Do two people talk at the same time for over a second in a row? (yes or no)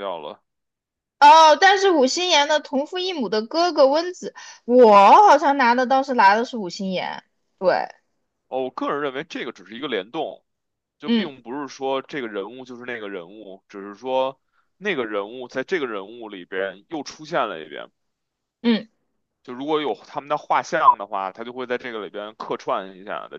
no